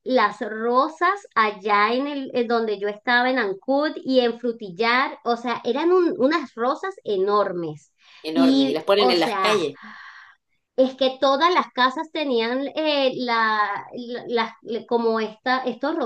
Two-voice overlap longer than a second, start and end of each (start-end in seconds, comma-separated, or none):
8.4-9.6